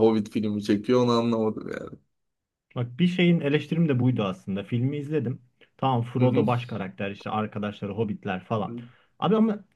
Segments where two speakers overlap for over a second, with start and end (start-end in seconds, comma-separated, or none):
none